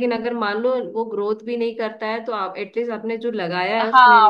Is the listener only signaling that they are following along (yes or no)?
no